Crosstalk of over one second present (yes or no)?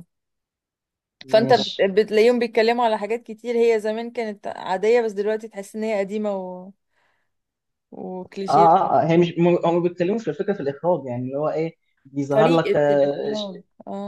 yes